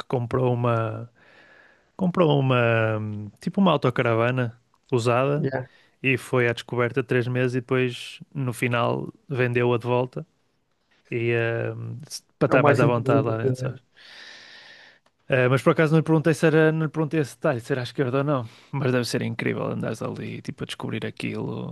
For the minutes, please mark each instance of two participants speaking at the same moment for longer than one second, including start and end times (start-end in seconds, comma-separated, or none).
12.5-13.7